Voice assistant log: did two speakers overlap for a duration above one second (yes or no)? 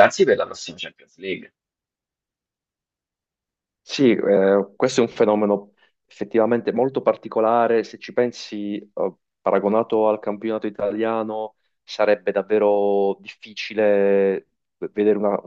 no